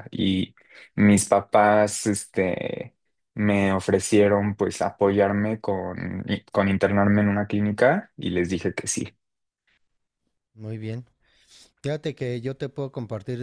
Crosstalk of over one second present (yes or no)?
no